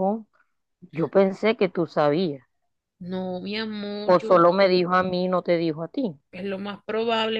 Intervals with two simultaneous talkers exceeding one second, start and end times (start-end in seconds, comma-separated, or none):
none